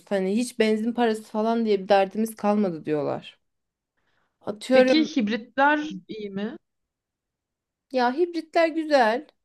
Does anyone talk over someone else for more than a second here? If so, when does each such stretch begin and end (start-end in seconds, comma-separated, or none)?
none